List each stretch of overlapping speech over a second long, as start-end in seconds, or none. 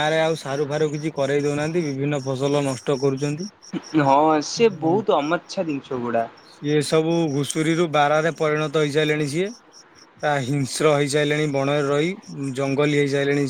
none